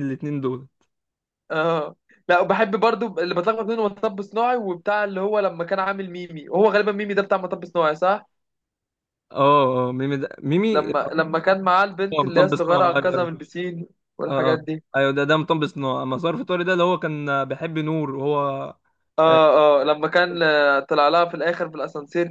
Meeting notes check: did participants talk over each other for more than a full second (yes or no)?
yes